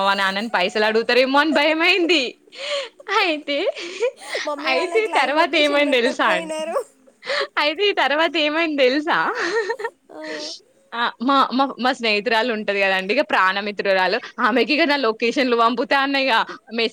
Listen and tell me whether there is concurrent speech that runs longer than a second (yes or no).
yes